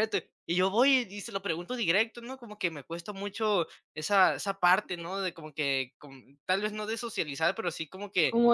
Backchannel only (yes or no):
no